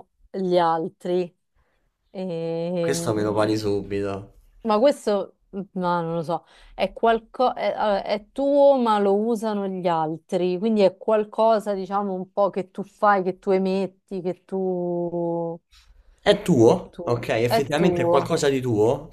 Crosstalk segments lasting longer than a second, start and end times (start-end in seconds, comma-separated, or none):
16.6-18.4